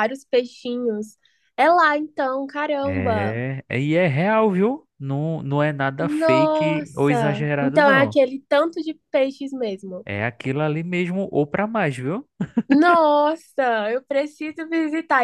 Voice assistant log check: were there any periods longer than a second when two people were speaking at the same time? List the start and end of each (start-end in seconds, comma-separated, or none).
6.0-8.2